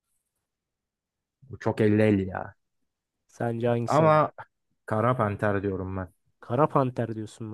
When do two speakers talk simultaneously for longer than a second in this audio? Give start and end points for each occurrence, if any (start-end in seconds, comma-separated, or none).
none